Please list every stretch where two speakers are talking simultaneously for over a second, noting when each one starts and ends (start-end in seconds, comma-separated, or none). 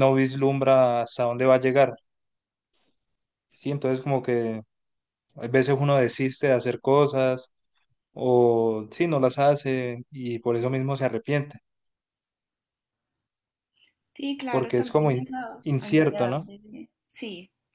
14.5-16.5